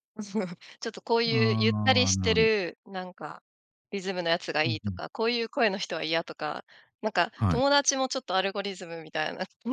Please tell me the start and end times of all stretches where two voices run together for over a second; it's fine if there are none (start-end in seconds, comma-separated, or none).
1.2-2.5